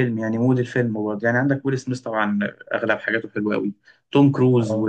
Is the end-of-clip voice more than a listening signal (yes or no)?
no